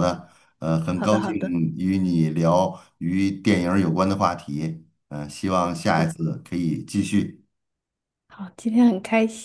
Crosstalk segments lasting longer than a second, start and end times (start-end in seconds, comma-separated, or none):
none